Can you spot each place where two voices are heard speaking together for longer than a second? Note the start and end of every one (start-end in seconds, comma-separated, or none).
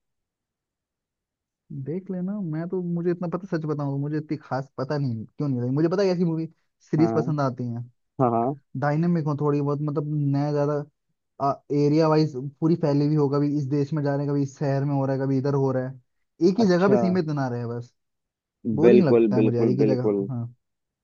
18.8-20.2